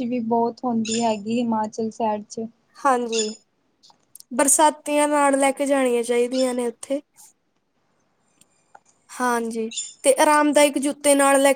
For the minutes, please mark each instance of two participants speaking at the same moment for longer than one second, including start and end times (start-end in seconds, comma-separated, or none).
none